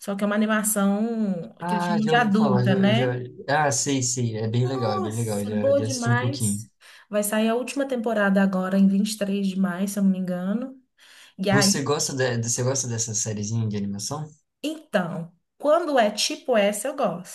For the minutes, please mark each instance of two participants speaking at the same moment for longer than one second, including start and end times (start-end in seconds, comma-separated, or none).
1.6-3.2, 4.6-6.7